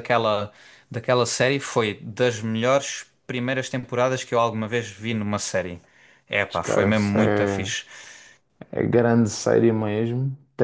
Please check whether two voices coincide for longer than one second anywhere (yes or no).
yes